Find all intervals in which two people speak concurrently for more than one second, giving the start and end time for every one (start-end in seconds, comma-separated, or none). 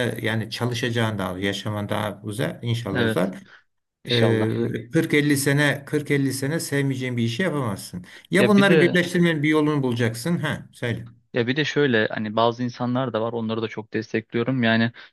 none